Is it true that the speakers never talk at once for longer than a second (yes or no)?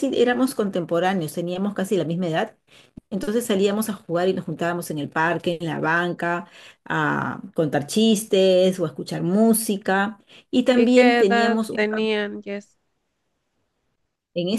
no